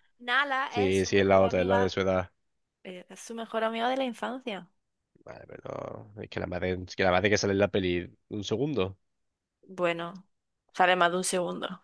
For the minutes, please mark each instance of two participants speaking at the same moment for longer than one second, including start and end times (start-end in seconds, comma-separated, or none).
0.7-2.0